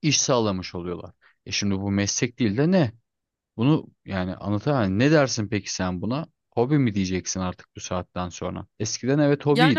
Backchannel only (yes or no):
no